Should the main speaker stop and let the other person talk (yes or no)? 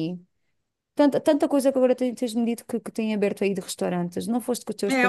yes